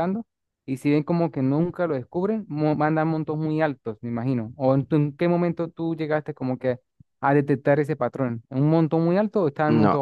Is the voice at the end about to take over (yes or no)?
yes